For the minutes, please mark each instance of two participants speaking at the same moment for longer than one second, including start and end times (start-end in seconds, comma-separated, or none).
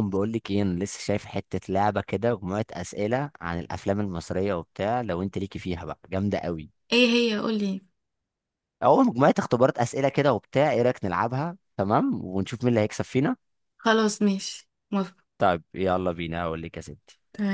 none